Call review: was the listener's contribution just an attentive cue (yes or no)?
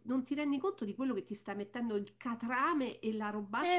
no